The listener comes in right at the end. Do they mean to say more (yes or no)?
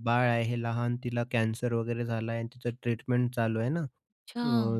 no